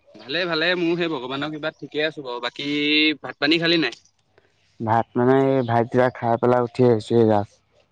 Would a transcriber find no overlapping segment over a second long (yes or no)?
yes